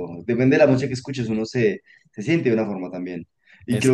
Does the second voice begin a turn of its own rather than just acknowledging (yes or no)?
no